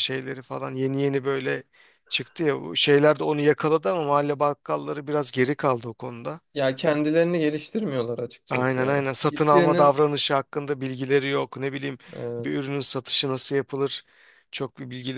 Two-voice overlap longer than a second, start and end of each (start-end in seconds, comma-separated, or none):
8.5-9.9